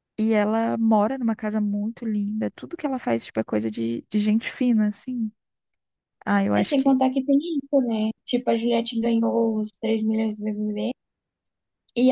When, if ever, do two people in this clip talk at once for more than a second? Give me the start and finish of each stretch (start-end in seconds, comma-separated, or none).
none